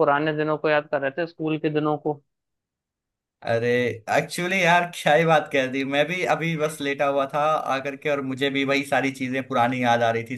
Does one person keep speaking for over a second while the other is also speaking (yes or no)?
no